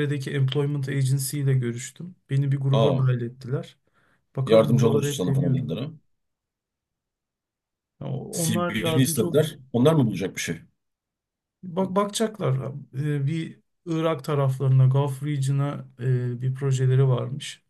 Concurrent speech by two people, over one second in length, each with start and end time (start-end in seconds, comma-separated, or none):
4.5-5.8, 8.3-9.6